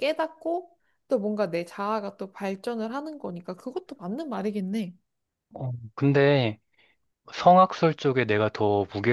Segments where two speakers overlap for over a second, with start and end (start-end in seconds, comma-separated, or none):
none